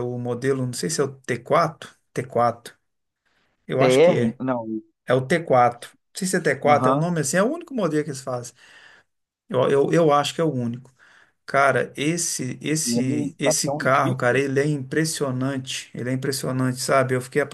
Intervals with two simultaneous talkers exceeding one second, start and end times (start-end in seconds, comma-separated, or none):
12.9-14.2